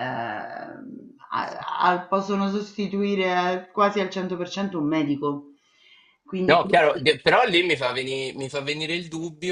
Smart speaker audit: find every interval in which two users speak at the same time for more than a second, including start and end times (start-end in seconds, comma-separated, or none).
none